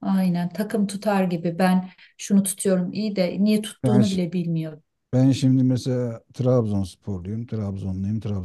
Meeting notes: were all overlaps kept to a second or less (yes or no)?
yes